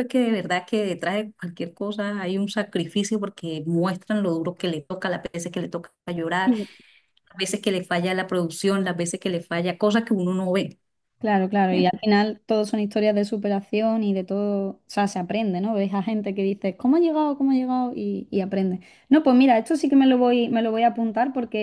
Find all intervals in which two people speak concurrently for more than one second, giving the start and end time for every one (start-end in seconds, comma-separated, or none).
none